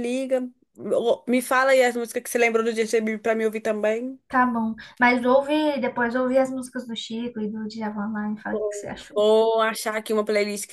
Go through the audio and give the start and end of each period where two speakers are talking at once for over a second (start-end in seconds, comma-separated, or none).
none